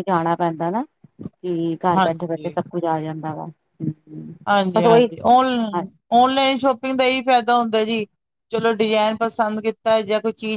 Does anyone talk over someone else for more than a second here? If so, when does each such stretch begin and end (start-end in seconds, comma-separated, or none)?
none